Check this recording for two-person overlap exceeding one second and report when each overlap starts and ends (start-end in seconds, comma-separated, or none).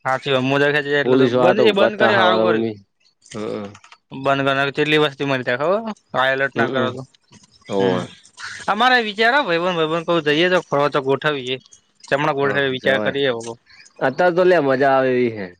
1.0-2.7